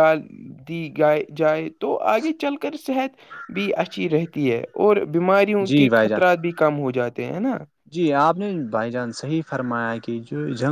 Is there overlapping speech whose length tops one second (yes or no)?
no